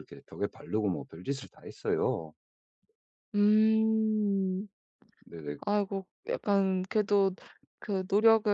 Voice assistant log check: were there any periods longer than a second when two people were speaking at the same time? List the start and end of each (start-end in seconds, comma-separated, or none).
none